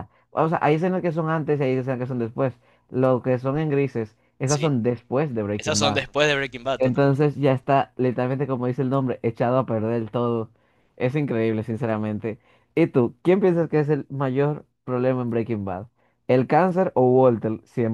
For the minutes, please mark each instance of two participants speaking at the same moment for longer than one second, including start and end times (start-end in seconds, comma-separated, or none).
none